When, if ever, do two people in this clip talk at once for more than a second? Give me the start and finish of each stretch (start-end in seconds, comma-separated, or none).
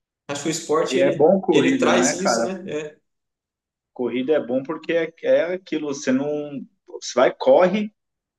0.9-2.5